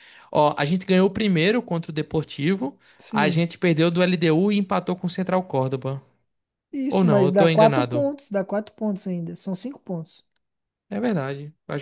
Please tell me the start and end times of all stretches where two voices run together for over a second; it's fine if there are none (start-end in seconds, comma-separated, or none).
6.9-8.1